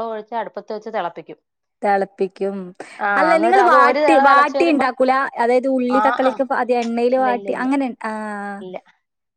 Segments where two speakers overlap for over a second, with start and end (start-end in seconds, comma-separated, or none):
3.2-4.9